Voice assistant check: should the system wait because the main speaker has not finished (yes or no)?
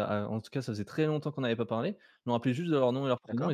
yes